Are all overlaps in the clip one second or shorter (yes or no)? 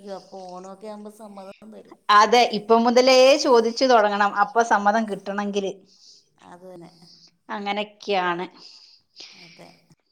yes